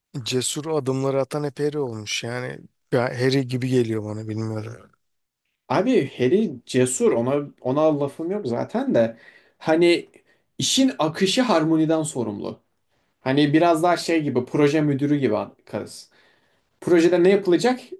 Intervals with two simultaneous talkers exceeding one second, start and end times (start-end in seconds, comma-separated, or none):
none